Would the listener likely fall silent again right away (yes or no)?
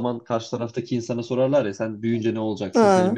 yes